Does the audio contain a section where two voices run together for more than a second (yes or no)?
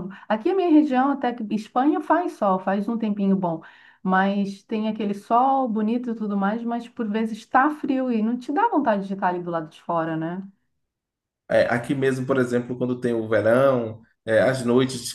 no